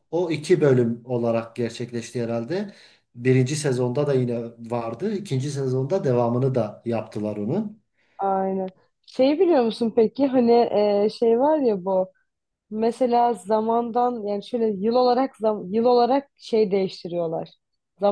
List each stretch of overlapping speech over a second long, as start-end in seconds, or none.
none